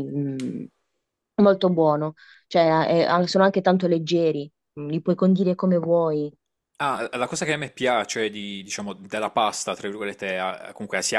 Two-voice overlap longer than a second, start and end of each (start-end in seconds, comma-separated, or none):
none